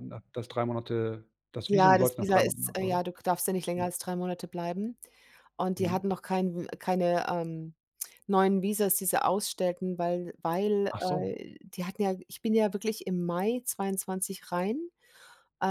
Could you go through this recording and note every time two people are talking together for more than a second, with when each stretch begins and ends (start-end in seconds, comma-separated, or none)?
1.7-3.0